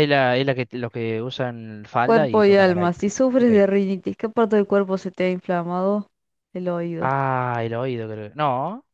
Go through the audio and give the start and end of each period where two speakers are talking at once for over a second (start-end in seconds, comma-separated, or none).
2.0-3.5